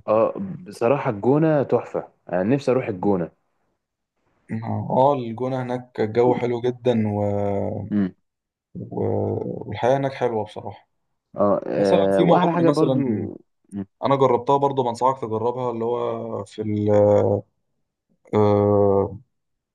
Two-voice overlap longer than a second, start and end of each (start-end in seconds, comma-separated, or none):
11.7-13.0